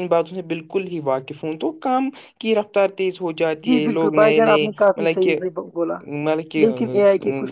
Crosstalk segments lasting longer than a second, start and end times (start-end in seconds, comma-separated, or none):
3.7-5.4